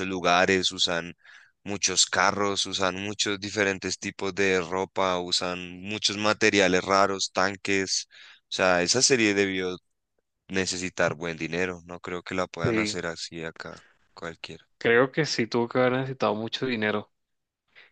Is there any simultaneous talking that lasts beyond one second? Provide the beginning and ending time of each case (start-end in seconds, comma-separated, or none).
none